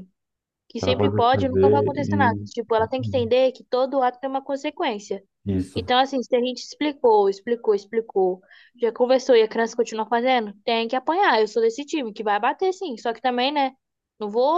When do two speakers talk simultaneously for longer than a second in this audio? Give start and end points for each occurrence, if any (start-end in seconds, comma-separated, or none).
0.8-2.5